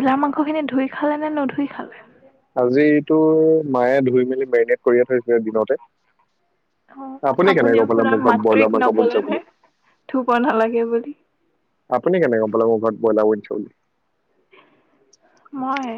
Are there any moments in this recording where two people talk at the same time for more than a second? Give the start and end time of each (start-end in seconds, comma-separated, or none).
7.8-9.4